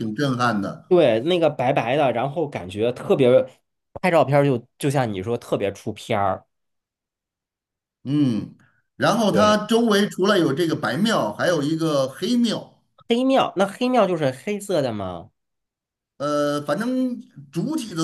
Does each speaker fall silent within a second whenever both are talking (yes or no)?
yes